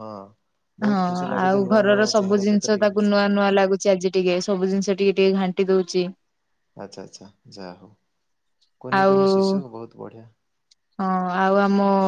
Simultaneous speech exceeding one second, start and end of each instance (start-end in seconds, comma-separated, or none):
0.9-3.1